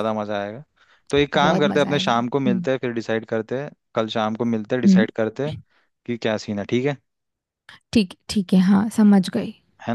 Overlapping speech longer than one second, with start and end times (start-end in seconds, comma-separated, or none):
1.4-2.7